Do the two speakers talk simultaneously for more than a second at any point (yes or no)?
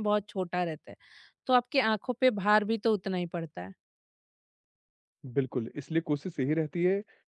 no